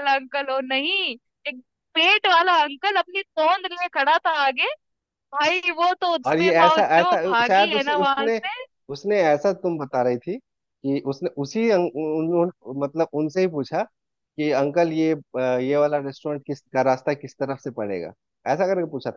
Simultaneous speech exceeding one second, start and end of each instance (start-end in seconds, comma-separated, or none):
6.3-8.4